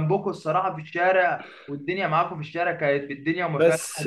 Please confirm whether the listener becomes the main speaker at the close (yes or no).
no